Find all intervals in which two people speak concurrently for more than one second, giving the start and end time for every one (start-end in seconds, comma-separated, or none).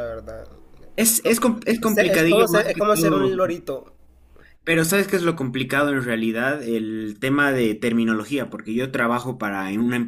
1.8-3.3